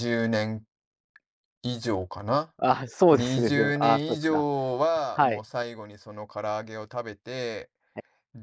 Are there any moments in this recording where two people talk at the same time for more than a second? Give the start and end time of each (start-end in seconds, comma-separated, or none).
3.1-4.5